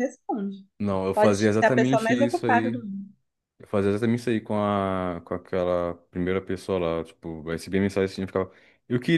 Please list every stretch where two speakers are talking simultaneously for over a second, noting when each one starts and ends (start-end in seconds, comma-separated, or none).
1.1-2.8